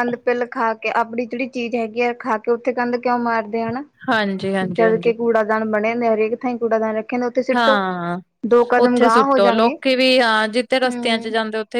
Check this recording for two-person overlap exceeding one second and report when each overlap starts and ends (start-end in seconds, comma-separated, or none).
none